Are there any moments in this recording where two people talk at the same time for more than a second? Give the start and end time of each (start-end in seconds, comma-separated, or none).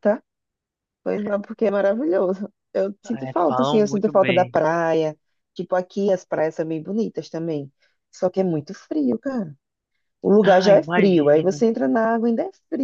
3.1-4.6, 10.4-11.6